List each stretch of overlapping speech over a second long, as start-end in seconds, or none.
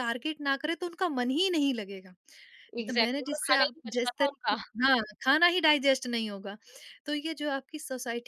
2.9-4.5